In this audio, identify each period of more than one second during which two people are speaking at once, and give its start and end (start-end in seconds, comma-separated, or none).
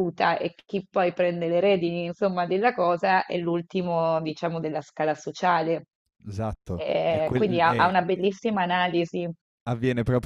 6.8-8.2